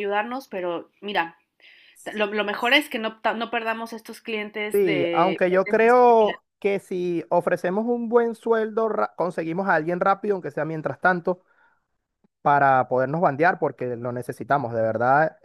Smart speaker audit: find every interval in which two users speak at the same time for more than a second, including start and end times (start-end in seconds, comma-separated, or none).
4.7-6.4